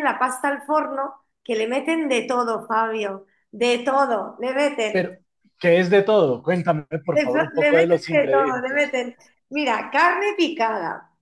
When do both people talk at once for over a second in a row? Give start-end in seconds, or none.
7.1-8.9